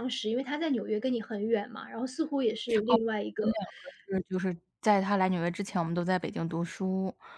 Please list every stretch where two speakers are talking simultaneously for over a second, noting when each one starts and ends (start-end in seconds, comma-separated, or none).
none